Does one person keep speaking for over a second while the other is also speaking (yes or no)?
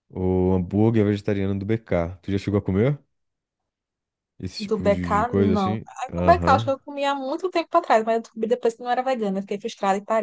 yes